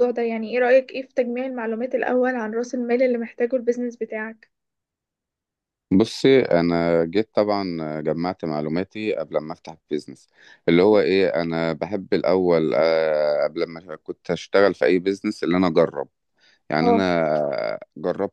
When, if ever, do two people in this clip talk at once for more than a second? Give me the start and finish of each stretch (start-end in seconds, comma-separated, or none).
none